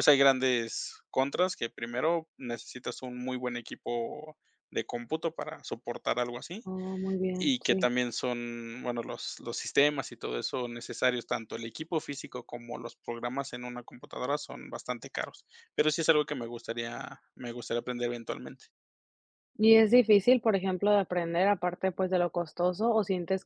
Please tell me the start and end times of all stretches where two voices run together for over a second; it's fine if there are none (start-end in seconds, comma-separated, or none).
none